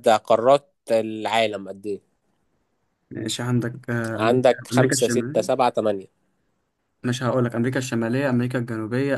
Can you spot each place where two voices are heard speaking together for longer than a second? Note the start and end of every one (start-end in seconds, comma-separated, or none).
4.1-5.5